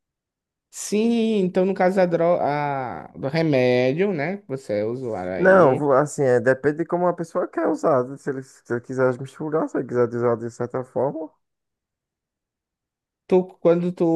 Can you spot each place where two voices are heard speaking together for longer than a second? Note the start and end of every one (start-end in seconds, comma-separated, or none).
none